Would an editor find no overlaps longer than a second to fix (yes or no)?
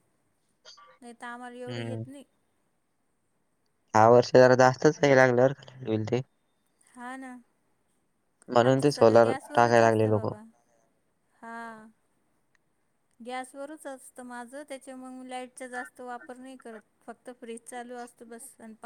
no